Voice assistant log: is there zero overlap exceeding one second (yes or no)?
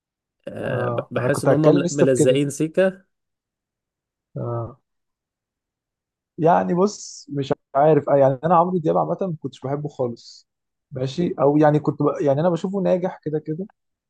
no